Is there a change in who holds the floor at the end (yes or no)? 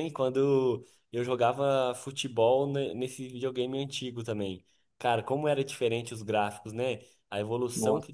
no